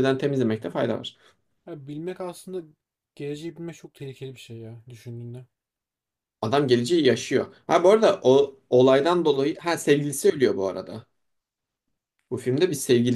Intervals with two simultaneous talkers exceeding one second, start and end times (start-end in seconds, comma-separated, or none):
none